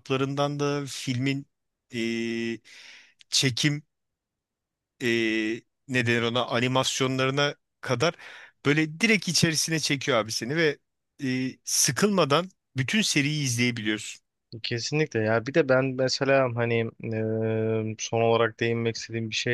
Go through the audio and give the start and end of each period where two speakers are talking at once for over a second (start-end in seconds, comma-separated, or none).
none